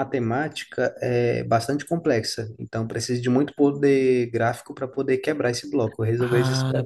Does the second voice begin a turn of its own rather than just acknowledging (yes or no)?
yes